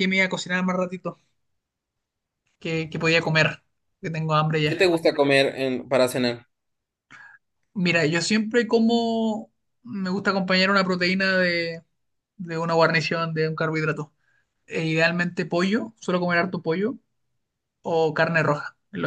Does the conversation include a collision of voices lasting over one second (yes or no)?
no